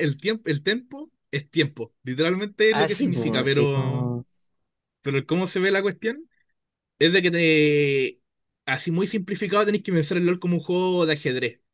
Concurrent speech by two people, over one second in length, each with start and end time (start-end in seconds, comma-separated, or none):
2.7-4.1